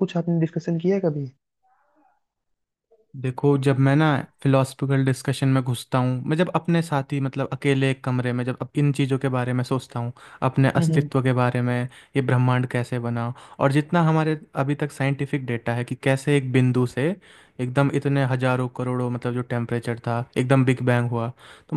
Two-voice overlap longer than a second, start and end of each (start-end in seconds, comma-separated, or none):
none